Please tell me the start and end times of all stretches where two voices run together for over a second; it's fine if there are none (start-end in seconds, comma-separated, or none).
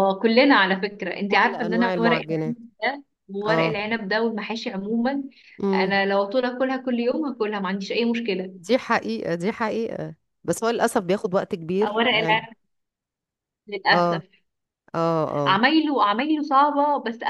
1.3-2.6